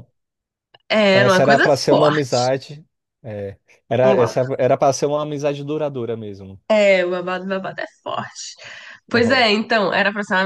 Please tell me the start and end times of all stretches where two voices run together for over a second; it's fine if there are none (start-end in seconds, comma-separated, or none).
1.1-2.4